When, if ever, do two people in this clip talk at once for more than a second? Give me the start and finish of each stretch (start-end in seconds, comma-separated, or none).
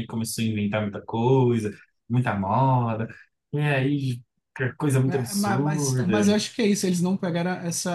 5.0-6.4